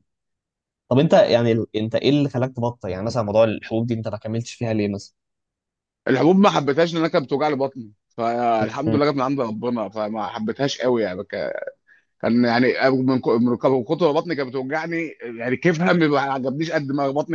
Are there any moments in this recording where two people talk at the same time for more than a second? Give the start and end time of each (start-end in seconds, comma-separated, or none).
none